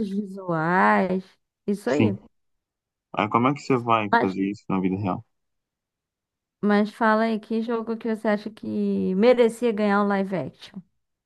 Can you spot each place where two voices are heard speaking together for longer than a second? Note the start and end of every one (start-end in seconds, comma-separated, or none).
none